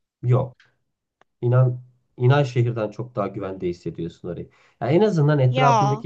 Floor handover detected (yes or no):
no